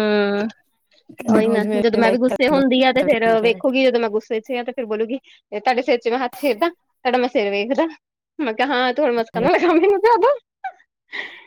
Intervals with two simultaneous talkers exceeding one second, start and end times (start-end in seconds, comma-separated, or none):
1.5-3.6